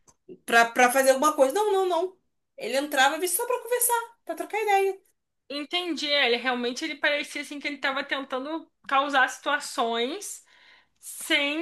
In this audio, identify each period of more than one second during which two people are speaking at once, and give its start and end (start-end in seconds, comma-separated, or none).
none